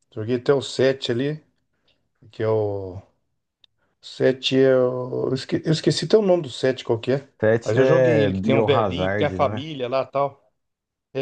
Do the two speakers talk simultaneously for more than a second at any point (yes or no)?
yes